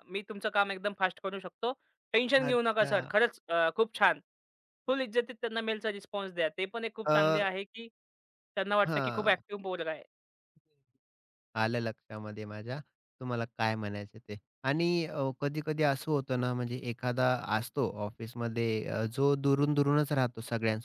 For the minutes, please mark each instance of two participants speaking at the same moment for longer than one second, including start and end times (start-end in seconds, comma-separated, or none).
none